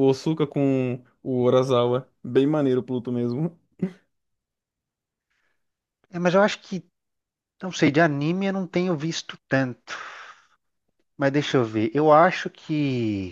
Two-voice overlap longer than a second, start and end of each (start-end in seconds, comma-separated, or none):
none